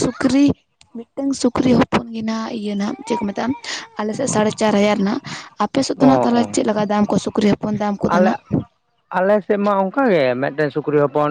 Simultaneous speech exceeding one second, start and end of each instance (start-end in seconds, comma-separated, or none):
none